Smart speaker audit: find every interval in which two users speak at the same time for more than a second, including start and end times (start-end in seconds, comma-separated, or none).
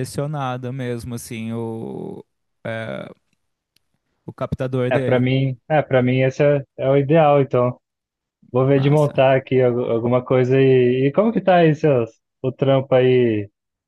none